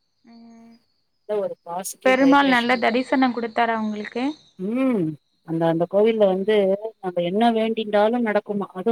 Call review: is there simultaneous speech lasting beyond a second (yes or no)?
no